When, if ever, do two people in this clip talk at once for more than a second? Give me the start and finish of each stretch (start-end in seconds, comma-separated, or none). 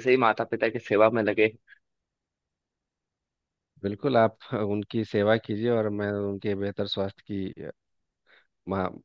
none